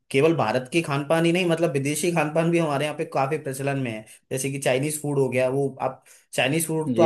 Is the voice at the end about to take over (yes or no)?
no